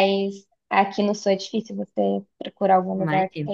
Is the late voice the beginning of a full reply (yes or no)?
yes